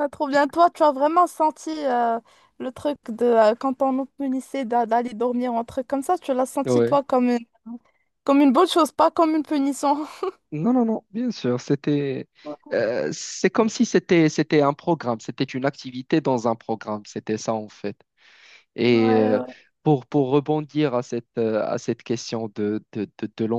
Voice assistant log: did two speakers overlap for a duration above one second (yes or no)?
no